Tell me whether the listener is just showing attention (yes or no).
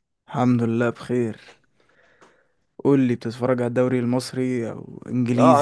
no